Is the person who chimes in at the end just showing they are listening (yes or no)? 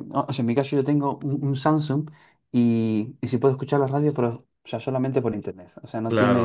no